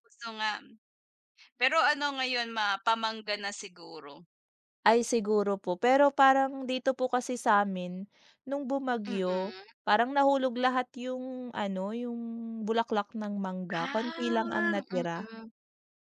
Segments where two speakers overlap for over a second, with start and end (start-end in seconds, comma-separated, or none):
13.8-15.3